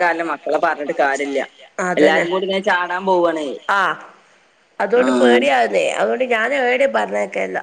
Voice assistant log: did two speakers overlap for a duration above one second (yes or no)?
no